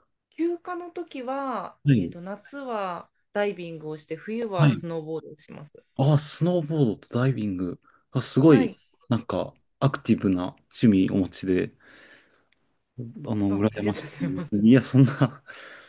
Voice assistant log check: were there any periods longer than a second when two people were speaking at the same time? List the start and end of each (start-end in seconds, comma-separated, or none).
13.5-14.8